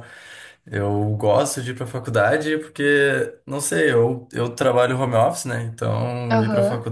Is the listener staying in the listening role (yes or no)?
yes